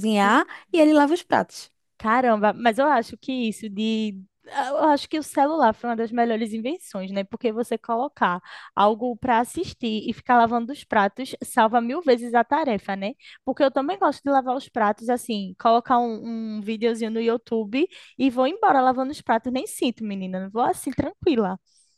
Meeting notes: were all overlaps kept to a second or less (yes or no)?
yes